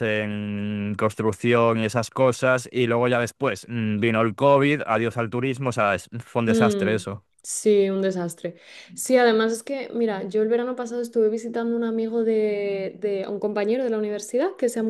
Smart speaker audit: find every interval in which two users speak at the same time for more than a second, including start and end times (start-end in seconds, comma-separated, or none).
none